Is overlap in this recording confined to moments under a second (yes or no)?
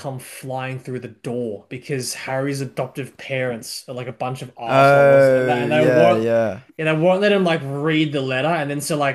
no